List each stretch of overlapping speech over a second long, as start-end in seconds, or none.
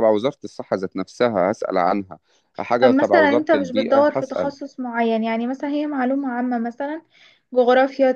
2.8-4.5